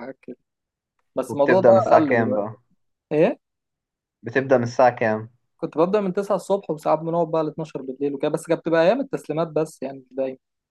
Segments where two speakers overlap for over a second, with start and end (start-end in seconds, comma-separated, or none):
1.3-2.6